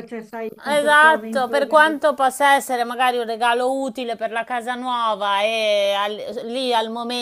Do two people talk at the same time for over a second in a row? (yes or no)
yes